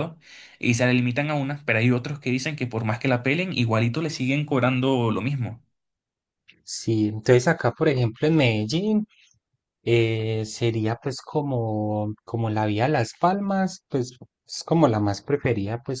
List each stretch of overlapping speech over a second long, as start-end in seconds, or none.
none